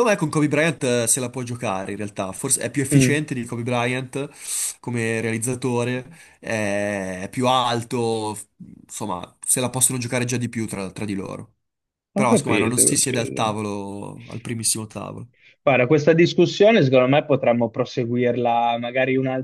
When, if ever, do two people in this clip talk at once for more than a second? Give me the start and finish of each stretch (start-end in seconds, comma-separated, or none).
12.1-13.6